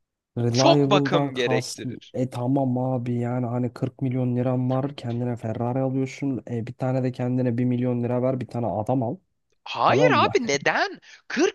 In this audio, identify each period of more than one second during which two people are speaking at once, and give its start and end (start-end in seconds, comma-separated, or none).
0.5-1.8